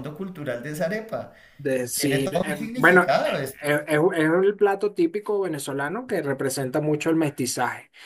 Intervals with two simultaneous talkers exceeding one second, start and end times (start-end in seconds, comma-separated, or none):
1.9-3.6